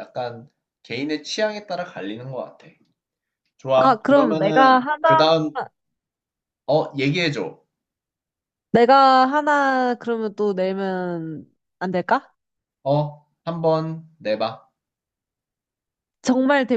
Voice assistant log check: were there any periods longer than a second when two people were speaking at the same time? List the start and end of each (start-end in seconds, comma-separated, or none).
3.8-5.3